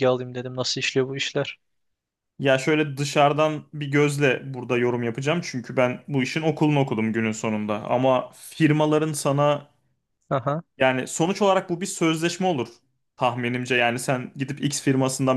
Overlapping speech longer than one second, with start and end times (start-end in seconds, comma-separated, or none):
none